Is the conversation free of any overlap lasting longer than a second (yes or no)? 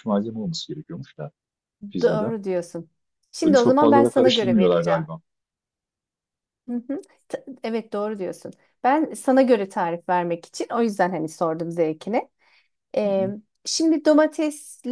no